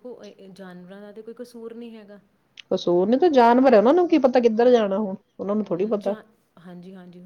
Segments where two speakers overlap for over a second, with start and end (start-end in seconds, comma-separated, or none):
none